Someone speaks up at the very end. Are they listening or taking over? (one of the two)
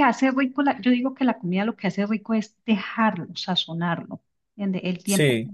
listening